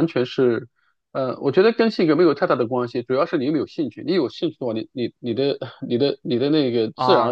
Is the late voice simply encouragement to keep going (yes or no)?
no